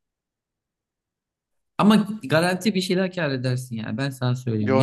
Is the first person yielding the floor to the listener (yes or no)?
yes